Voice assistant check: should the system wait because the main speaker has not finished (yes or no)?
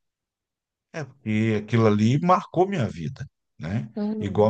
yes